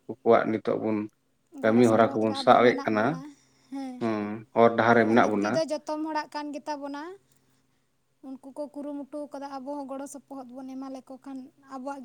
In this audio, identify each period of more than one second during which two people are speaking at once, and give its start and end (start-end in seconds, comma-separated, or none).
1.6-3.2